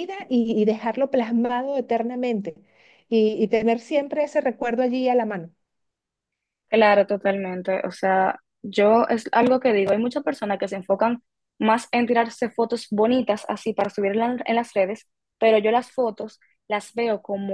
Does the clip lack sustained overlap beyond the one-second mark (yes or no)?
yes